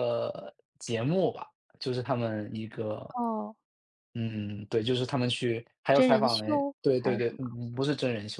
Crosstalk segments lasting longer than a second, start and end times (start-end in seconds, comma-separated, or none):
5.9-7.4